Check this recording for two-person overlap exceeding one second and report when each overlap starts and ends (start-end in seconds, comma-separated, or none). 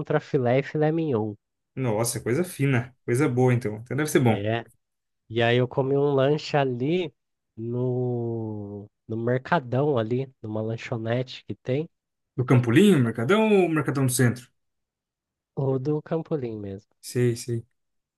none